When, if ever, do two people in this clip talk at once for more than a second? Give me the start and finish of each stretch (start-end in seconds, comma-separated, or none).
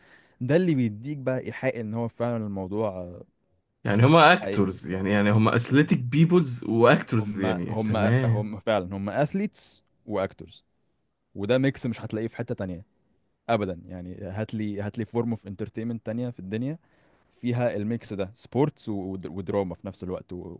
7.2-8.5